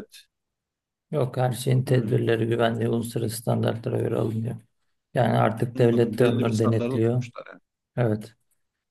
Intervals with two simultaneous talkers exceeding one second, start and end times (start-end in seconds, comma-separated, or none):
5.8-7.2